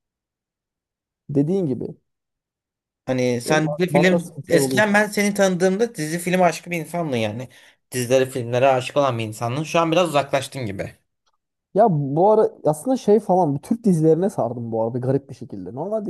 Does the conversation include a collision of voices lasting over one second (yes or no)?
yes